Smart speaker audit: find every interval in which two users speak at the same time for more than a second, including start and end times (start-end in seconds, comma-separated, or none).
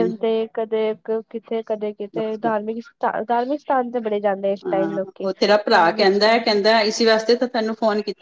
none